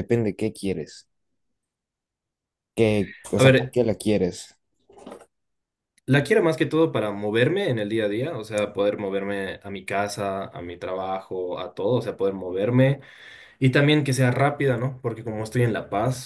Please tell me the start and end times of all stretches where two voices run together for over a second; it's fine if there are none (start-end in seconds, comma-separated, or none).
none